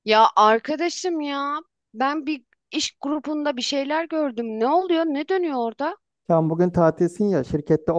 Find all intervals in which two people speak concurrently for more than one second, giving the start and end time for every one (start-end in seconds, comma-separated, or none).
none